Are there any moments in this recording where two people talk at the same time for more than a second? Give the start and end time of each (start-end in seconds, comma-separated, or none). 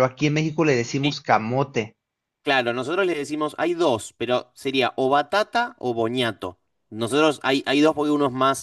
none